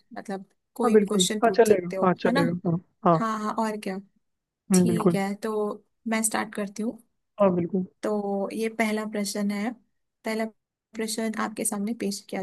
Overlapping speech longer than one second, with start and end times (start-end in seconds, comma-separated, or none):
0.8-2.4